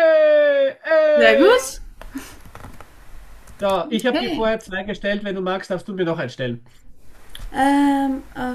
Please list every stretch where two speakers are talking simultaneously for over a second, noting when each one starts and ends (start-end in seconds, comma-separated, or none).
none